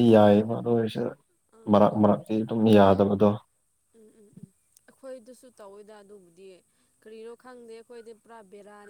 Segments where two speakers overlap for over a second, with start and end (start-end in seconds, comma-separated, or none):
none